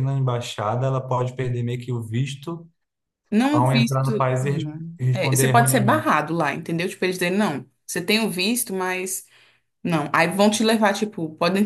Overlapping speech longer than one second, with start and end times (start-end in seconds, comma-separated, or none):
3.4-6.1